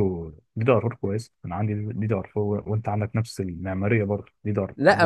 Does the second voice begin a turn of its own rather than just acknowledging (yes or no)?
yes